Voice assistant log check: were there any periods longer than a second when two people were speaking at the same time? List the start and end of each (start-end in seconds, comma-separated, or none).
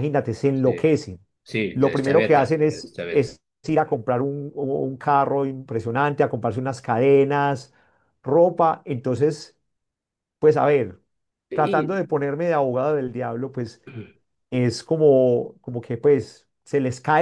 1.7-3.4